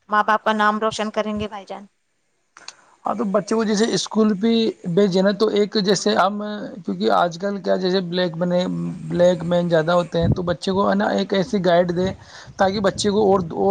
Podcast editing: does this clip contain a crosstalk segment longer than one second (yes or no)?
no